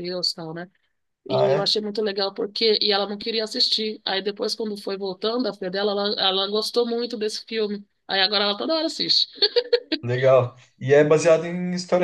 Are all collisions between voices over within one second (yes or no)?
yes